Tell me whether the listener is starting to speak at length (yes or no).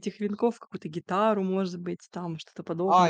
yes